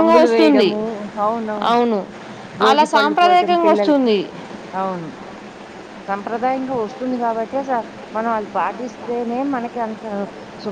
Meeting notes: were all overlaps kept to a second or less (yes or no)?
no